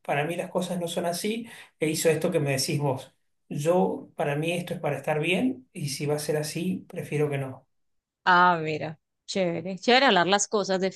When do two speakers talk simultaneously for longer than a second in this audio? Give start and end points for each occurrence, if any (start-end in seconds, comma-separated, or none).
none